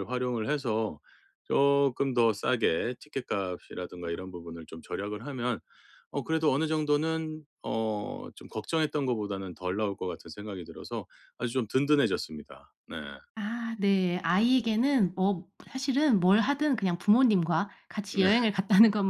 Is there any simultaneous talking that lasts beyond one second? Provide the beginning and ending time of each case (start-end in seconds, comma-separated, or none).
none